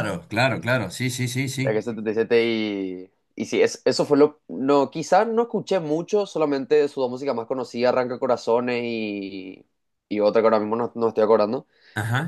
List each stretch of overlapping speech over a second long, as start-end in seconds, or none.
none